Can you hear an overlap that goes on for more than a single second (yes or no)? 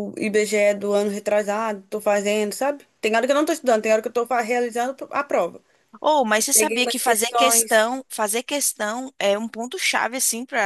yes